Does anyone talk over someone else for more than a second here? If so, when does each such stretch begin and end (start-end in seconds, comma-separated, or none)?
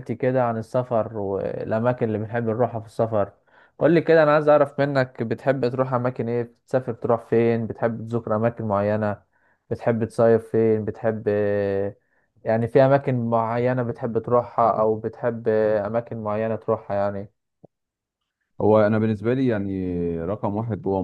none